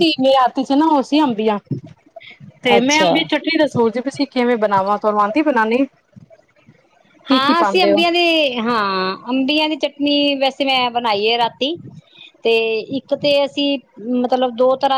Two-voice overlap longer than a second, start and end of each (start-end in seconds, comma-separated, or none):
none